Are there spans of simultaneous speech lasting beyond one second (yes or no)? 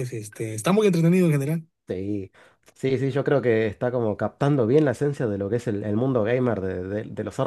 no